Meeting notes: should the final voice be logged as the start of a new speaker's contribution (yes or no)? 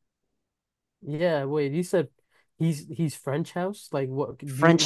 yes